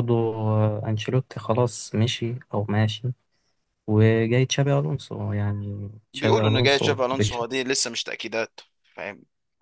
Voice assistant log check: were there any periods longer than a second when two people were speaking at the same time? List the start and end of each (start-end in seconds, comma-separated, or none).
6.1-7.6